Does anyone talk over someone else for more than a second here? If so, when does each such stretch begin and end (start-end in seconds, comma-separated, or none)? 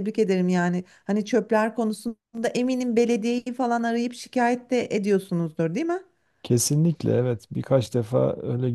none